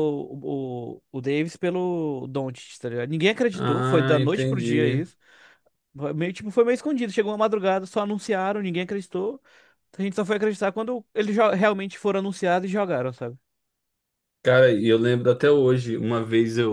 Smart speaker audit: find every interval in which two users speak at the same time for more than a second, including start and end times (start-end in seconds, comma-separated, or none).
3.5-5.0